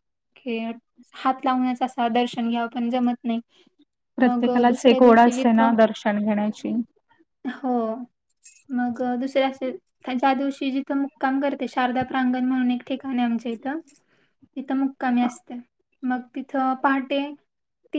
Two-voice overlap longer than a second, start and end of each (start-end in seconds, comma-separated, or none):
4.2-5.7